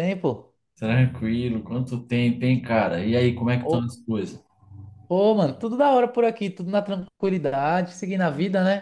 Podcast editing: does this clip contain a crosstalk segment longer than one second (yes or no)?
no